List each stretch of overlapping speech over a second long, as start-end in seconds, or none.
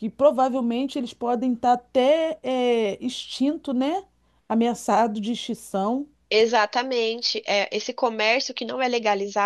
none